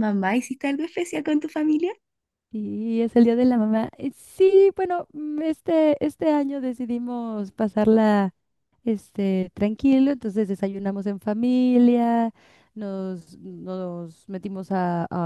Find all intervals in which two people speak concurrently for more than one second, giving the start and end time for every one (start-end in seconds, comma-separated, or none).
none